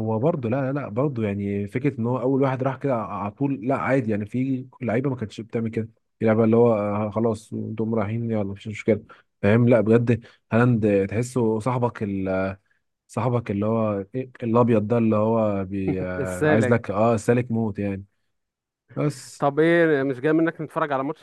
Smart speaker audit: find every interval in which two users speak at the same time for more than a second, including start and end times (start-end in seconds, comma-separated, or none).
none